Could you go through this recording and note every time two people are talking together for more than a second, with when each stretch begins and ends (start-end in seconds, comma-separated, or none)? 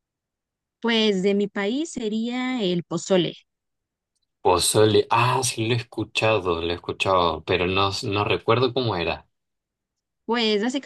none